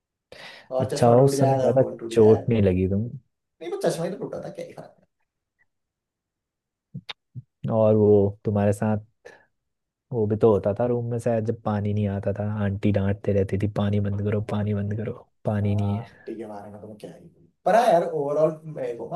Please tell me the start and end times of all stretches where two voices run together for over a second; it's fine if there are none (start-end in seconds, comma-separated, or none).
0.8-2.5